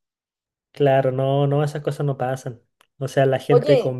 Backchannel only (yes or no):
yes